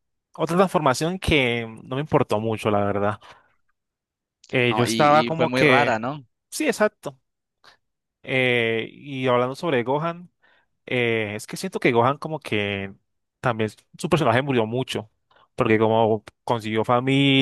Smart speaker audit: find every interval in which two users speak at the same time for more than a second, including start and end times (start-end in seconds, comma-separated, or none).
4.7-6.0